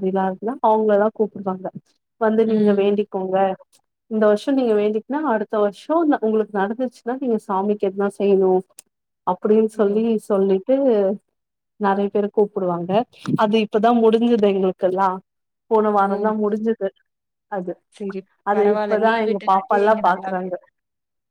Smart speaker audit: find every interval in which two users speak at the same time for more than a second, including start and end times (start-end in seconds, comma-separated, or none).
18.6-20.5